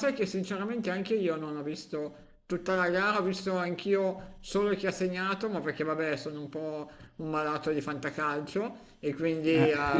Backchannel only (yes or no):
yes